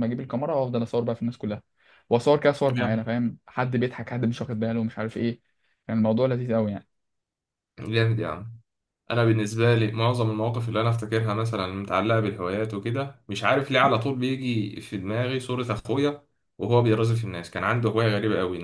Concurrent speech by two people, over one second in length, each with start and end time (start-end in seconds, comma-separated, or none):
none